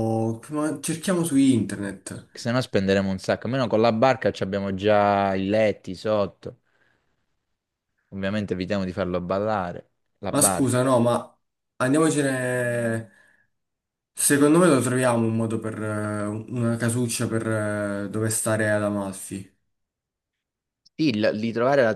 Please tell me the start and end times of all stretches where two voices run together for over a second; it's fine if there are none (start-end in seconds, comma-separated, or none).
none